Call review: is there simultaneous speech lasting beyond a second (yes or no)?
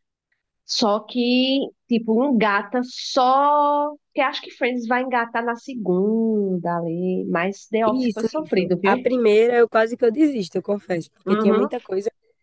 yes